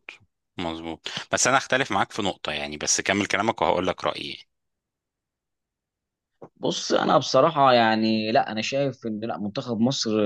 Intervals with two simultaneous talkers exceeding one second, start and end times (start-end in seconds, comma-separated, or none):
none